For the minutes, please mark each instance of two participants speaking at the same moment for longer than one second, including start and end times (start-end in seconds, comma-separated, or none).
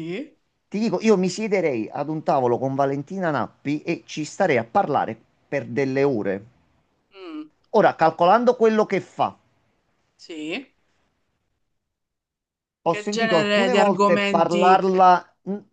12.9-14.8